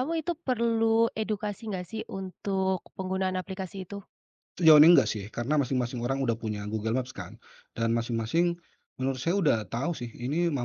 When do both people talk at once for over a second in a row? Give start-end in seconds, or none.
none